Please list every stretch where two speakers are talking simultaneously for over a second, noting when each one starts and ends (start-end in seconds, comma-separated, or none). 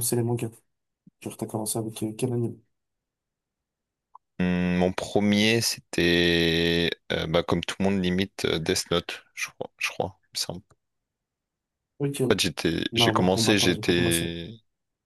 12.9-14.2